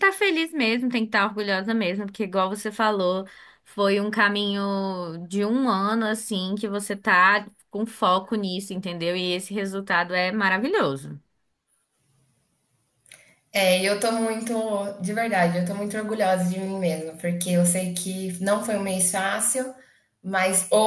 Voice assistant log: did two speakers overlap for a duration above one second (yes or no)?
no